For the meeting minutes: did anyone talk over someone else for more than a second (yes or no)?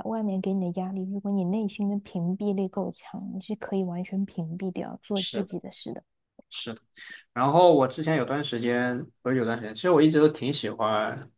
no